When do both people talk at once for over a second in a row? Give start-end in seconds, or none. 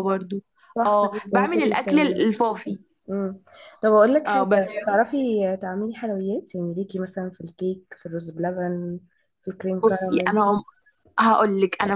0.8-2.3